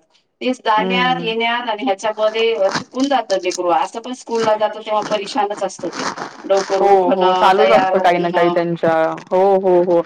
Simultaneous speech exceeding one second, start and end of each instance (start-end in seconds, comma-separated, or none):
6.8-8.5